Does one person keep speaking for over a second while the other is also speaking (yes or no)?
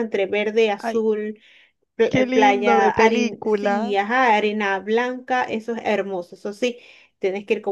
yes